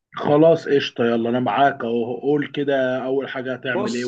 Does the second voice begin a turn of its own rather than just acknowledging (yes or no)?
yes